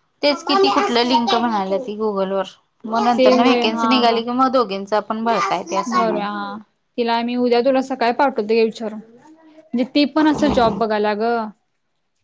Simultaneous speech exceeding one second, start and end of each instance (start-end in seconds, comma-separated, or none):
none